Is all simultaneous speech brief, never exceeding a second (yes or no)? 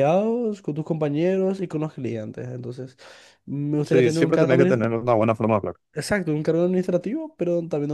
no